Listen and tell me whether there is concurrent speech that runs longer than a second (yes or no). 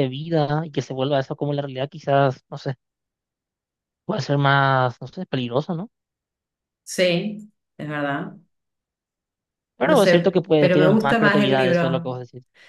yes